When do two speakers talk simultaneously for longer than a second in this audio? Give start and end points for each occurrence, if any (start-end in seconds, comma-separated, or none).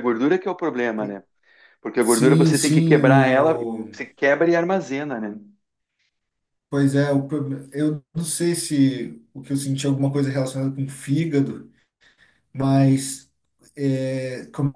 2.0-3.9